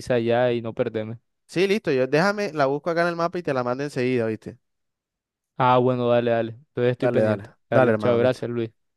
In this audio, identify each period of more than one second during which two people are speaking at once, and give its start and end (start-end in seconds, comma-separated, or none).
7.0-8.4